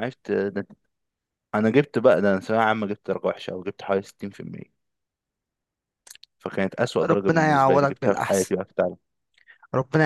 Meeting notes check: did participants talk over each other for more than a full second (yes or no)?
yes